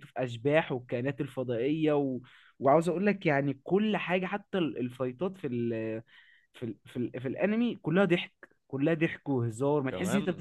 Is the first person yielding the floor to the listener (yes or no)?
no